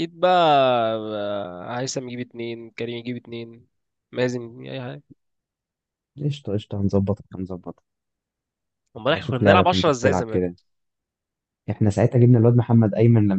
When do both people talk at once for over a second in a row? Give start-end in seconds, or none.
9.1-10.5